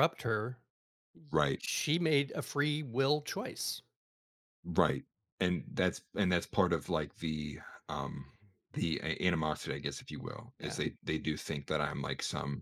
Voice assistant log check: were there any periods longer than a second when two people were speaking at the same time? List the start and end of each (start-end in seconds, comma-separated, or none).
none